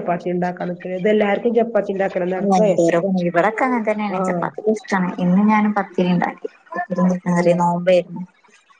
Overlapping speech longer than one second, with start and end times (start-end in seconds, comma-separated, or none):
none